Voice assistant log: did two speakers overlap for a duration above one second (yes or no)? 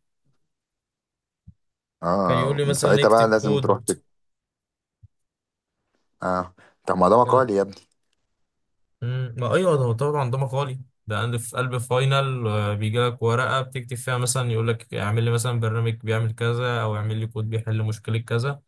yes